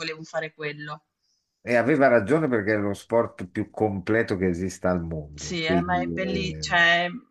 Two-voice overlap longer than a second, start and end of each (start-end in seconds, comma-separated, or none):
5.3-6.7